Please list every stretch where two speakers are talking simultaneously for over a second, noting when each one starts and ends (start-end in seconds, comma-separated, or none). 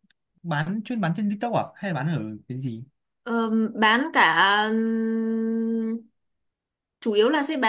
none